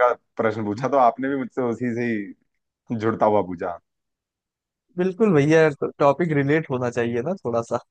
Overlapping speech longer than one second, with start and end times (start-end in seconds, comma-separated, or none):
none